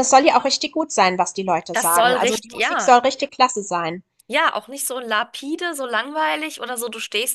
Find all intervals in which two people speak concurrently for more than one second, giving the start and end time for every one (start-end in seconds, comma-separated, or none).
1.7-2.9